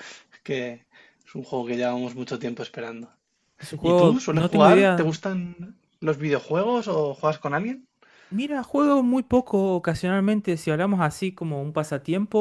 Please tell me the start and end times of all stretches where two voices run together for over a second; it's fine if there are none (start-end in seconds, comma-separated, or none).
3.8-5.1